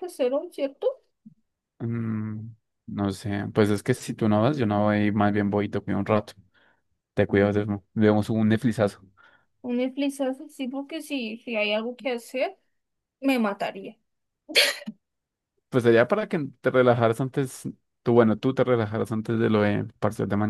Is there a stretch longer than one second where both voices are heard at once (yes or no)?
no